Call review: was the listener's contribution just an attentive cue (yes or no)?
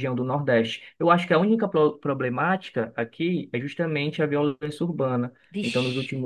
yes